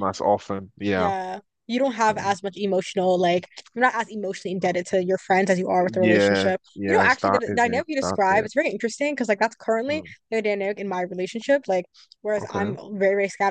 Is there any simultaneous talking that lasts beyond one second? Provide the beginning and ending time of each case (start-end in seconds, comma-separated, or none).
5.8-8.5